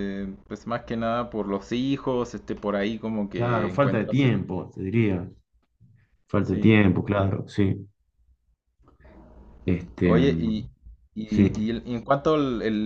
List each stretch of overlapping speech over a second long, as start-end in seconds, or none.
3.4-4.6